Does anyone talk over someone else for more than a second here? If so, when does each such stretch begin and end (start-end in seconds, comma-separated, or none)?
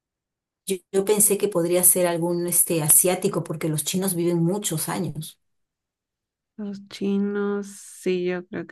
none